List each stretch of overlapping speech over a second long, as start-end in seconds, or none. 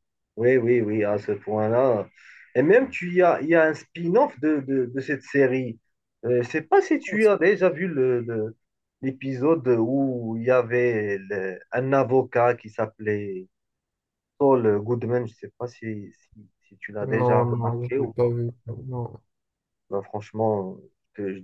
17.1-18.3